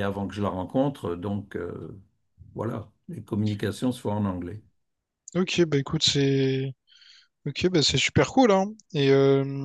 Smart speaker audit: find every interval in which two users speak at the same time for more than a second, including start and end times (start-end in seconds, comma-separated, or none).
none